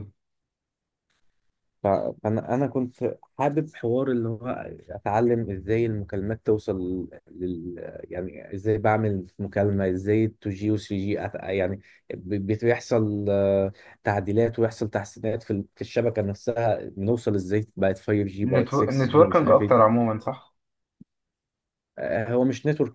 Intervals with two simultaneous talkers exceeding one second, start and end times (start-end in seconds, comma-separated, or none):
18.4-19.9